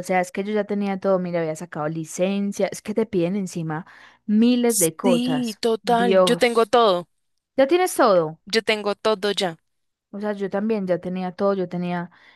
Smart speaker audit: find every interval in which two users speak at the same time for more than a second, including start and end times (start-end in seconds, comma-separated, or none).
5.0-6.7